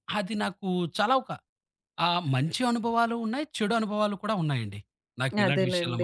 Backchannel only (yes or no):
no